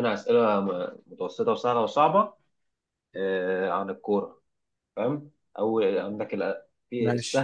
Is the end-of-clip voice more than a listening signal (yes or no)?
no